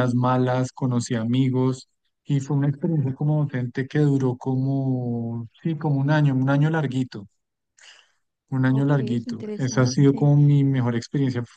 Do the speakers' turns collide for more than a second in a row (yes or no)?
yes